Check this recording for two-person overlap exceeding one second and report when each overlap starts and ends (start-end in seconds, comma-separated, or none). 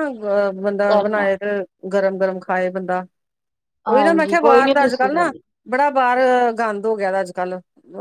3.9-5.3